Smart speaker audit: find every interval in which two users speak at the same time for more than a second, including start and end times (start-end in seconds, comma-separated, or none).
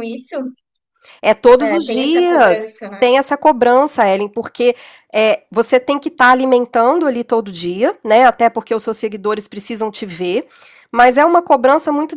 1.6-3.0